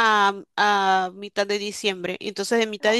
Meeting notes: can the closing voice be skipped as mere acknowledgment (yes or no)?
yes